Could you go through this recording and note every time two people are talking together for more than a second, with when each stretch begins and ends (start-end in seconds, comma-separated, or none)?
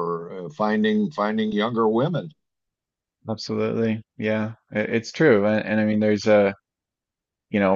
none